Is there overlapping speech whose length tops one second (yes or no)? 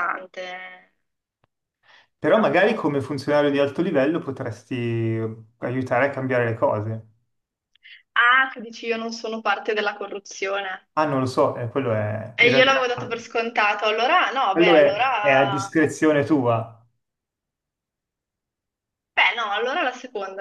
yes